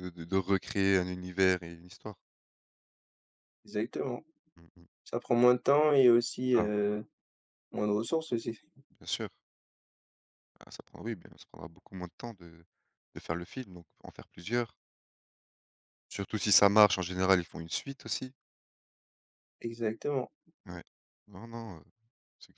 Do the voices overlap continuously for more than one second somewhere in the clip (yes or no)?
no